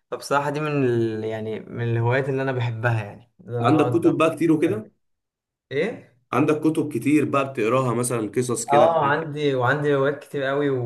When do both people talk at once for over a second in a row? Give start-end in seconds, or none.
3.6-4.8